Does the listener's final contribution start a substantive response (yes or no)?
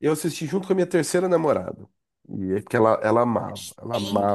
no